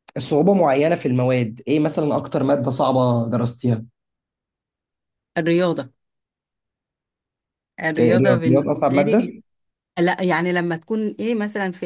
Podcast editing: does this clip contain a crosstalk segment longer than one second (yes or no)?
yes